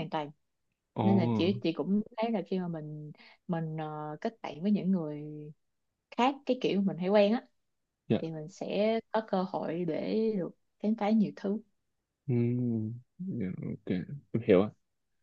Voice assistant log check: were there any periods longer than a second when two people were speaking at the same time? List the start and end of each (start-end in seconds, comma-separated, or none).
none